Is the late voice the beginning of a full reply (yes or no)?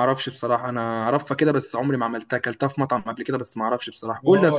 yes